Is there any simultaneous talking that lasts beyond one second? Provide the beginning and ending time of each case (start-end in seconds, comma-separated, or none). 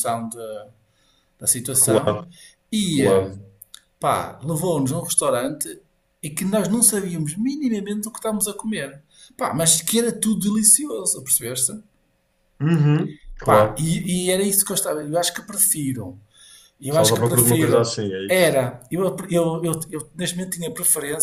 16.9-18.6